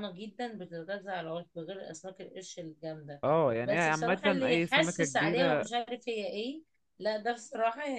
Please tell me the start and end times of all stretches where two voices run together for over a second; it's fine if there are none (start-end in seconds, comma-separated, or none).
3.6-5.7